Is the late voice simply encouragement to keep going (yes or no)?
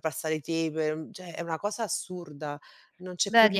no